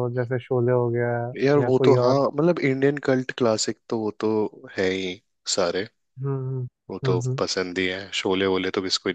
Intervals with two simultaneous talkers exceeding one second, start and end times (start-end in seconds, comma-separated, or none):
none